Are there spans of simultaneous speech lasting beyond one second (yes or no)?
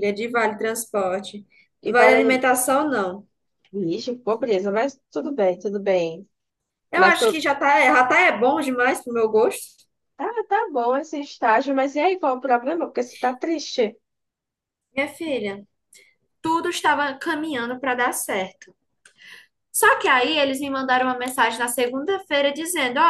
no